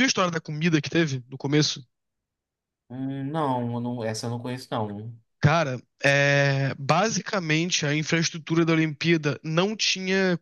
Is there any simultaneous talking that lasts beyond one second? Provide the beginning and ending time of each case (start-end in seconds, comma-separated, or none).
none